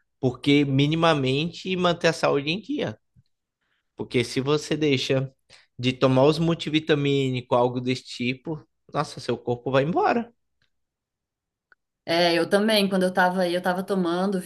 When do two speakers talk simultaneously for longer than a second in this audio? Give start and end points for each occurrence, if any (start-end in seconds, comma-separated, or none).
none